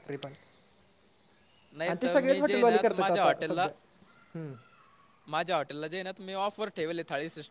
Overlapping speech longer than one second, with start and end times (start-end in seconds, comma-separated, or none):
1.9-3.7